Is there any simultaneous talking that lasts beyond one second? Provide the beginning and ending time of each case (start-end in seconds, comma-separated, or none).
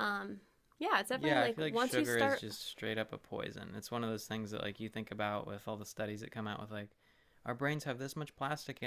1.2-2.4